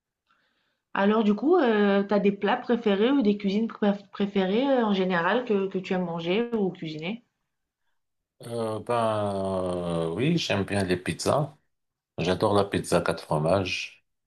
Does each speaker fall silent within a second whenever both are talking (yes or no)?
yes